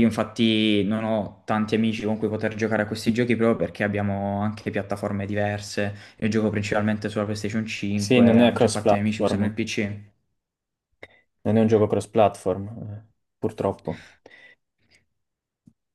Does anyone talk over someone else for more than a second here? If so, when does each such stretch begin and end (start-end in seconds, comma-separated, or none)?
8.0-9.5